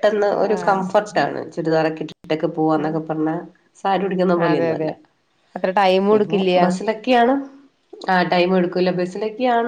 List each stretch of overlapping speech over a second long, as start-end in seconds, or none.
none